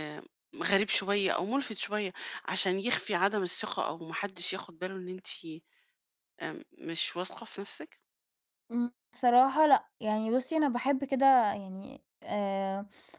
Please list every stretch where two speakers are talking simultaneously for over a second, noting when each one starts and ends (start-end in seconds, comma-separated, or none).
none